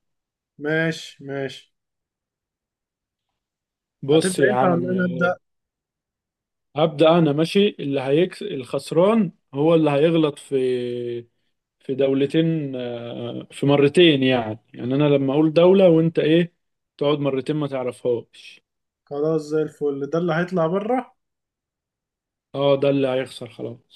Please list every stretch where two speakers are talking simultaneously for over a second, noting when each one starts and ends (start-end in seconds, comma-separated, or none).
4.1-5.3